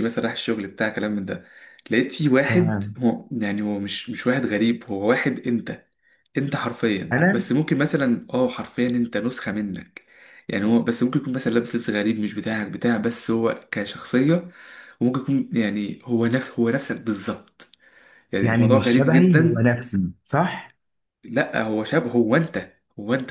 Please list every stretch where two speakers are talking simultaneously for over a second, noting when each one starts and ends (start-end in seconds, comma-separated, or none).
18.4-19.7